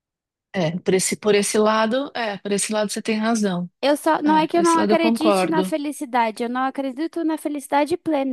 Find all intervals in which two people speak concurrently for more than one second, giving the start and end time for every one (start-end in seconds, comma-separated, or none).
4.2-5.7